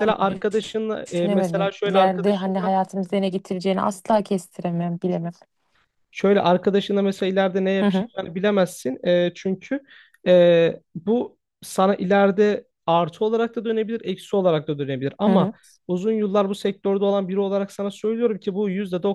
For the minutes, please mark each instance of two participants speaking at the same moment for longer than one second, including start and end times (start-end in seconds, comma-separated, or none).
1.1-2.7